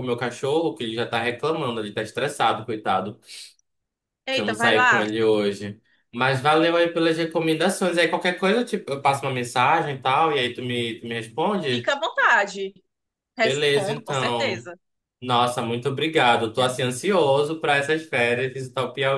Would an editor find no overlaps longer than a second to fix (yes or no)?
no